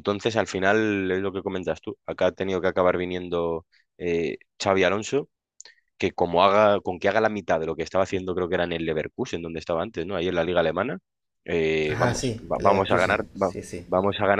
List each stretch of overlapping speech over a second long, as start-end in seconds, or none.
11.9-13.9